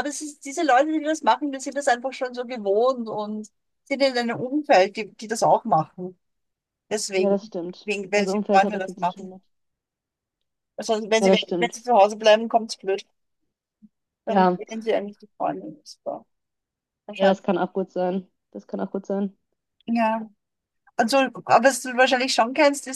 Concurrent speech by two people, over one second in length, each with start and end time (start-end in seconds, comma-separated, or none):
7.1-9.3